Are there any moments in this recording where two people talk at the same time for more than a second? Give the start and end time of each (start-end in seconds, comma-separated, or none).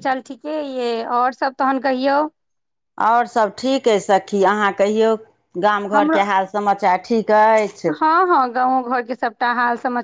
none